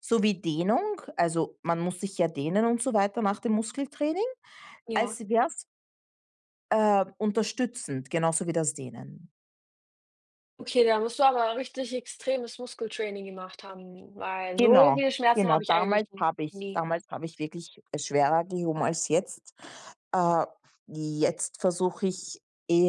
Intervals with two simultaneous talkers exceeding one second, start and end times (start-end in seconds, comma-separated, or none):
14.6-16.8